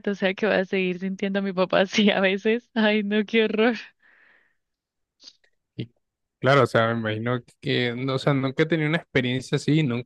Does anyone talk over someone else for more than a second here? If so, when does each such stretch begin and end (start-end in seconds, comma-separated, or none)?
none